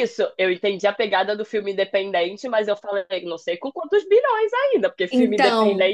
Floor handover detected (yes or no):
no